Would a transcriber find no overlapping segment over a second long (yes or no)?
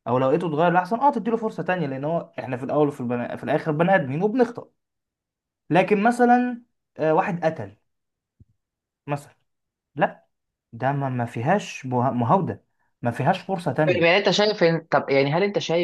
yes